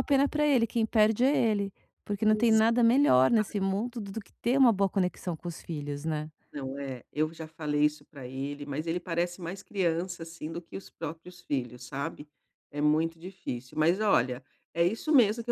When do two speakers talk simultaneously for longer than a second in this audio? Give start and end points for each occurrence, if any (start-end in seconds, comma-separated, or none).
none